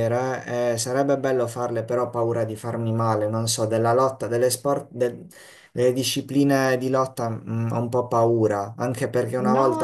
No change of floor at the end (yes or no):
yes